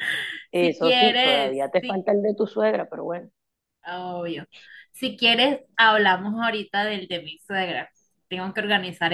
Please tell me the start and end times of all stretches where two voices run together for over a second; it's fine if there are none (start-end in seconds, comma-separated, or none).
0.5-2.1